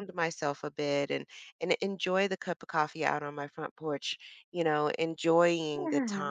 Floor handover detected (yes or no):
no